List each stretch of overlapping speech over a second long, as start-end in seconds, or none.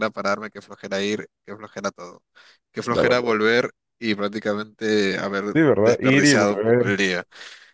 5.5-6.9